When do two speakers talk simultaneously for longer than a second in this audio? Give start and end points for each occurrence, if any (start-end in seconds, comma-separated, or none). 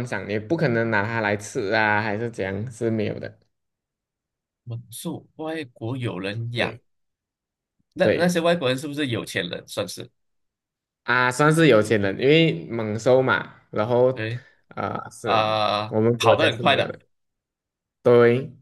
15.2-16.9